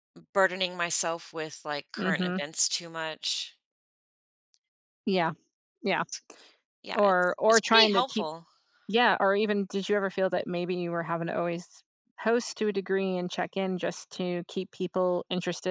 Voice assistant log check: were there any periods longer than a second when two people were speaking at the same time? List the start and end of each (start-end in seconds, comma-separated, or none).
6.9-8.3